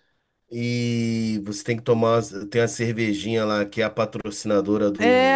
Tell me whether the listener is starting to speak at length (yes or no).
yes